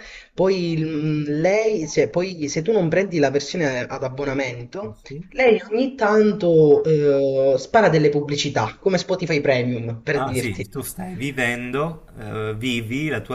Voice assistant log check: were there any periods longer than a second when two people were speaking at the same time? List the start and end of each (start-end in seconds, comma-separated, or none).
none